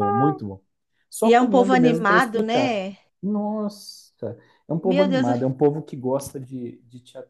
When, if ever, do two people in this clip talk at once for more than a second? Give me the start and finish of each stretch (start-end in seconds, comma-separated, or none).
1.2-2.8